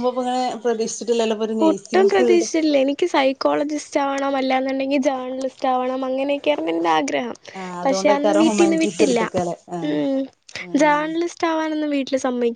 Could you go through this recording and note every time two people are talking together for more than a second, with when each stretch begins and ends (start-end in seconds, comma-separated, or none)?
7.8-9.2